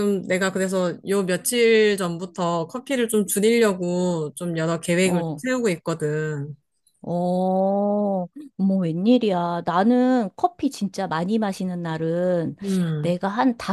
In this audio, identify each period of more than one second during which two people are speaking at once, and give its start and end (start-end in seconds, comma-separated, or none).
none